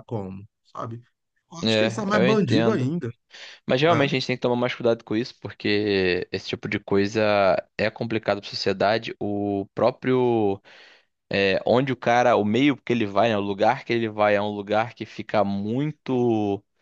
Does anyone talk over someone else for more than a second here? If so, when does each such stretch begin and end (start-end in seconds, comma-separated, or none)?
1.6-2.9